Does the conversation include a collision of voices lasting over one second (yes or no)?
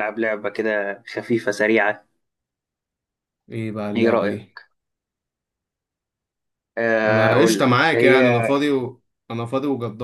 yes